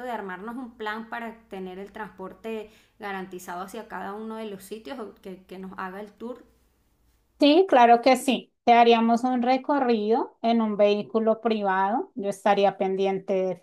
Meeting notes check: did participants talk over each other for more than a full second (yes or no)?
no